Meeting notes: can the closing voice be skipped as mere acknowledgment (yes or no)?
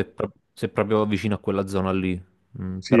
no